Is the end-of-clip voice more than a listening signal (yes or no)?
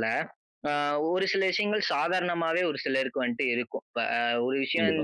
no